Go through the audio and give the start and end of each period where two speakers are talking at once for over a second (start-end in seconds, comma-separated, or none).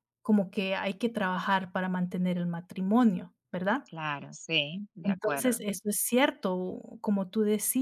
none